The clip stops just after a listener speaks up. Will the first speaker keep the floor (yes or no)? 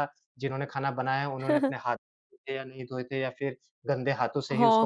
no